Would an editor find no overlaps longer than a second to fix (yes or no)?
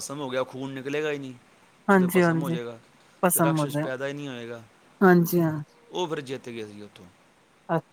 yes